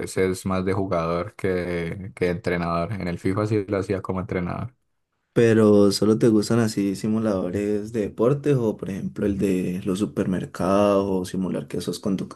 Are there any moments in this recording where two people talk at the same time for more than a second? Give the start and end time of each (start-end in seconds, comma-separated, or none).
none